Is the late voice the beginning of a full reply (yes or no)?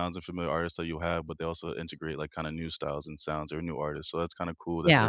yes